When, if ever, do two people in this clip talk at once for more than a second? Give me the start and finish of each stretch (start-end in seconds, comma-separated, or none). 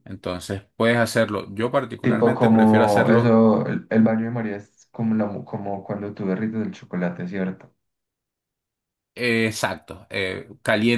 2.0-3.4